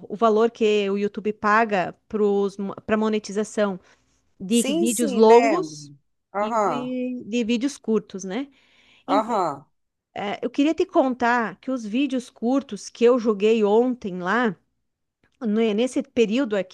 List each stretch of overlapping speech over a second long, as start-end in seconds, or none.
4.5-5.8